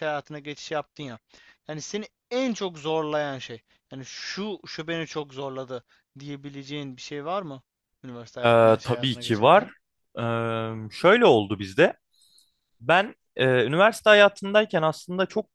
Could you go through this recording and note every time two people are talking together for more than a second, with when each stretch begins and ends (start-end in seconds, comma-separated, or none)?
8.4-9.7